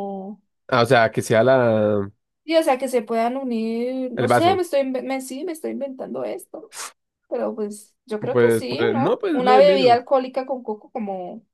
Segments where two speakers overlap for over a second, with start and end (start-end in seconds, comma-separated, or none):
8.3-10.0